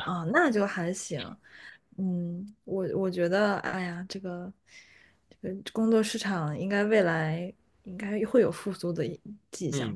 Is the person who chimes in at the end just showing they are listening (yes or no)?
no